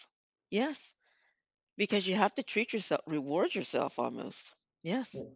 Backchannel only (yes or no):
no